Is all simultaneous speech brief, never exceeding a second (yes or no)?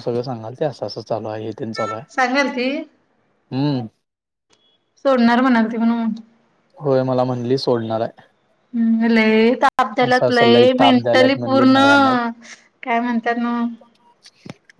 no